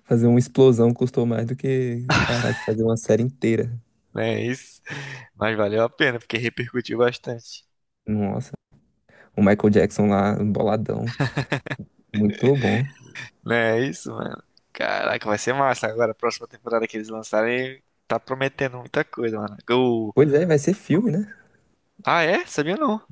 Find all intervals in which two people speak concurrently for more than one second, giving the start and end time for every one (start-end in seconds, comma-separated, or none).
none